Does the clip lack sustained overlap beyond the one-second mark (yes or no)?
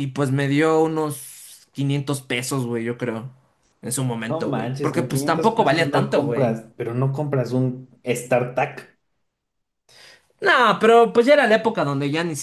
no